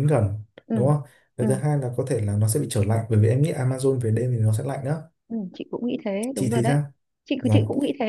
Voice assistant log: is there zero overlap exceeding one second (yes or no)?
yes